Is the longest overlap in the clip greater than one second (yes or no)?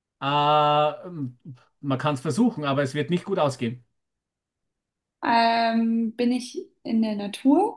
no